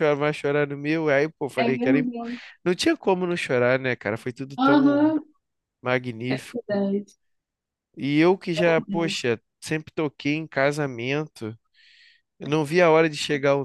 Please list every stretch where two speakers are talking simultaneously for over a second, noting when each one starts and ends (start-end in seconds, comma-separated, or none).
none